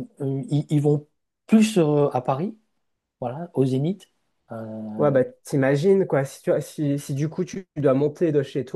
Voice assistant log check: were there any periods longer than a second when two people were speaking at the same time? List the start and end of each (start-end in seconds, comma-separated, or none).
none